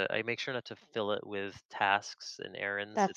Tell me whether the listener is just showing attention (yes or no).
yes